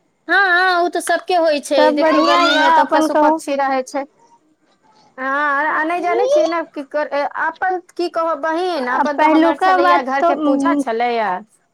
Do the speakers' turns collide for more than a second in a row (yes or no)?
yes